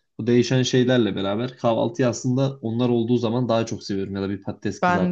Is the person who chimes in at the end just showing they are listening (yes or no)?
yes